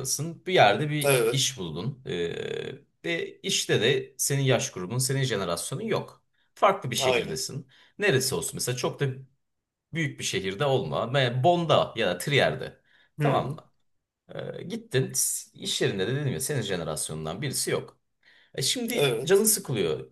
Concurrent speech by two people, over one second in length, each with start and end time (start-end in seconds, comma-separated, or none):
none